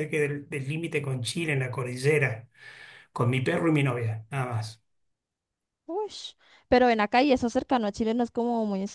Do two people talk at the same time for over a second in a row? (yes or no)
no